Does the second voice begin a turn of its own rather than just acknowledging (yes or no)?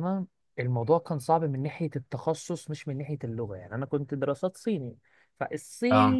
no